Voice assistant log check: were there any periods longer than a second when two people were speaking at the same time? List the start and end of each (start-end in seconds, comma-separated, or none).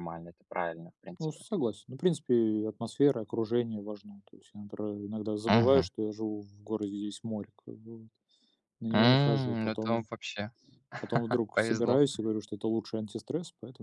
8.9-10.1